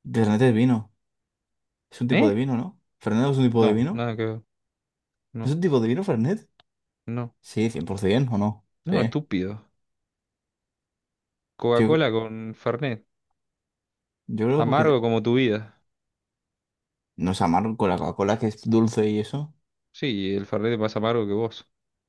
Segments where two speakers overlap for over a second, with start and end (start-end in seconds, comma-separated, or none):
none